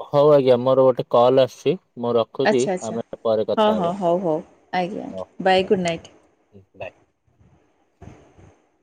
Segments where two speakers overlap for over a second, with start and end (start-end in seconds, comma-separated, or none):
4.8-6.1